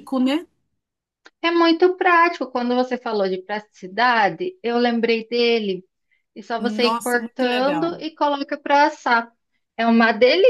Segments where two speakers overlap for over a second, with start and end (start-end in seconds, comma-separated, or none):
6.6-8.0